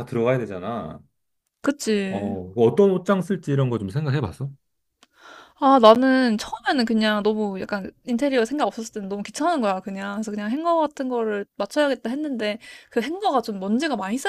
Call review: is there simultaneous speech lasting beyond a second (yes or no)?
no